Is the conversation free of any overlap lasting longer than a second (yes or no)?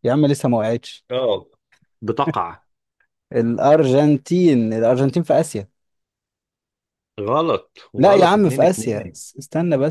no